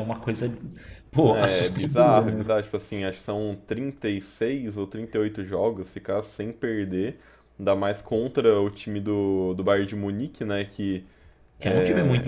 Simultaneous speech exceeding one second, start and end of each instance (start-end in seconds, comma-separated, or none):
1.2-2.5